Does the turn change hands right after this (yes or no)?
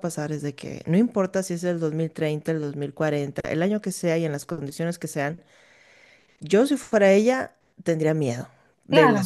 yes